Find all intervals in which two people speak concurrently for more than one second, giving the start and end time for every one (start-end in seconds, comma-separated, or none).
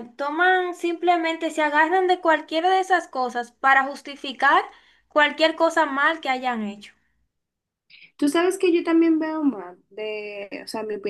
none